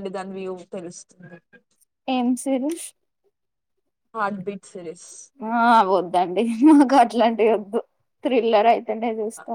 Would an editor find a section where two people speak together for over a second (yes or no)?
no